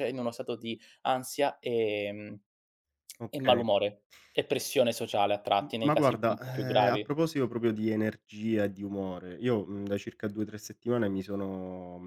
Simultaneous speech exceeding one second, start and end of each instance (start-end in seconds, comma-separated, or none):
5.6-7.1